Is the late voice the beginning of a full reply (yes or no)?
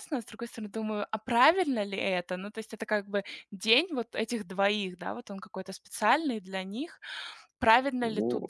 no